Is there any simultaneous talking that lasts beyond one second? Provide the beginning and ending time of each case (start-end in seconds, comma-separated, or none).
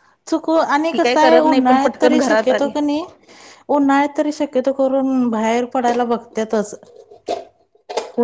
0.9-2.7